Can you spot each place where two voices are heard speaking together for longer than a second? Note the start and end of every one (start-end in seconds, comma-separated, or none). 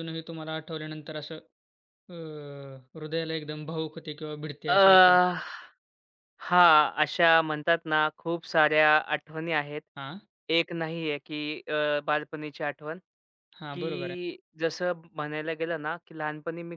none